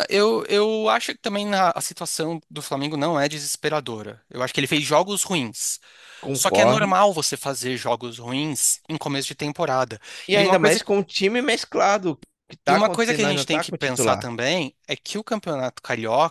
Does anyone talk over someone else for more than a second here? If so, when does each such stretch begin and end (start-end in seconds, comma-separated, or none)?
12.7-14.3